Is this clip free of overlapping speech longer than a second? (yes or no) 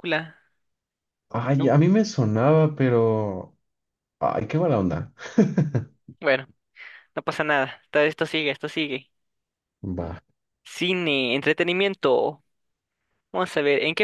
yes